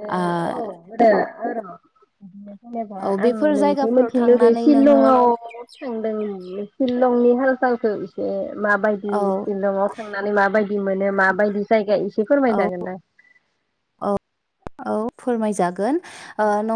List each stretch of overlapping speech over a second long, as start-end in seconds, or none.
3.1-5.0